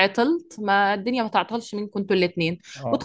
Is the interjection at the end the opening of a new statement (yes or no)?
no